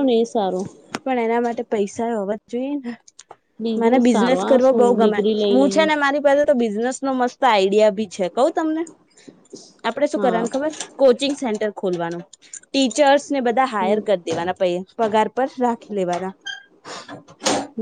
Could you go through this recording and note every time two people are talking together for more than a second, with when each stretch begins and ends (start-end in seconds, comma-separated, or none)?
4.1-5.9